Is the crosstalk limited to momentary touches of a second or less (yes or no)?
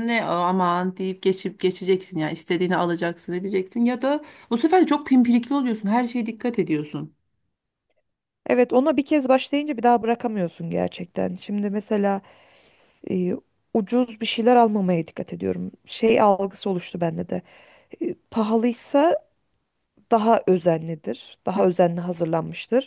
yes